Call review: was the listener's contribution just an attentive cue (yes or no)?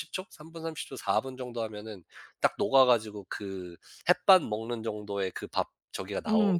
no